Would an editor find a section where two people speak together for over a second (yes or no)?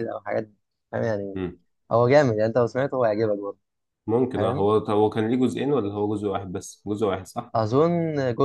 no